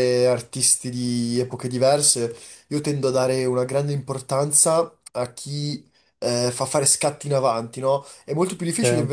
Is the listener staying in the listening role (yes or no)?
yes